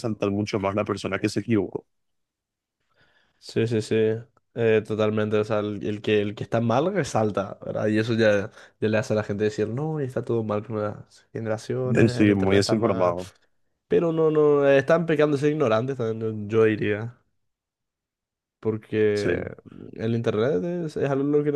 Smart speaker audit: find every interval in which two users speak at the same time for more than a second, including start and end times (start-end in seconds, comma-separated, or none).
11.9-13.1